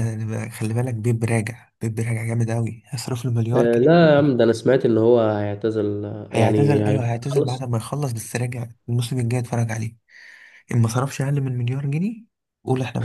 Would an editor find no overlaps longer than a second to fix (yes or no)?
no